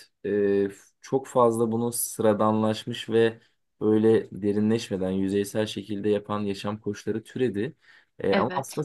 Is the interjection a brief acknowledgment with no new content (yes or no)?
yes